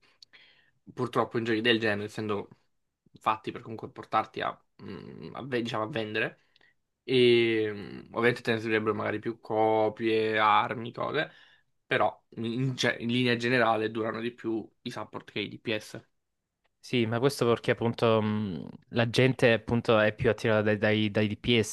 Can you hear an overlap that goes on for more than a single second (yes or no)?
no